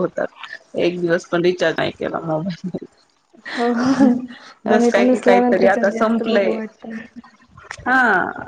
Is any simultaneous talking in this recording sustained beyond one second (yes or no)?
yes